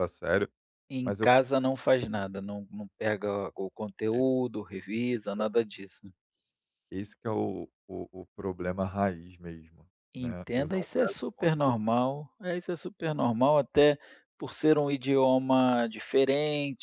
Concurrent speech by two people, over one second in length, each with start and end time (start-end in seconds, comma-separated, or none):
10.1-11.7